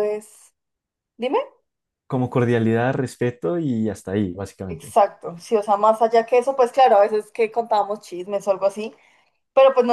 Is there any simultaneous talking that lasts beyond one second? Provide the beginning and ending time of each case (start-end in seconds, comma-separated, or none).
none